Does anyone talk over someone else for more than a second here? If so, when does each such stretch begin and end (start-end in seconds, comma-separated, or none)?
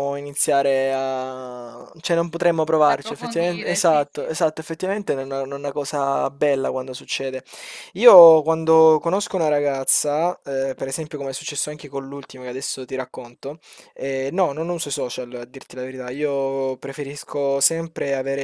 2.8-4.3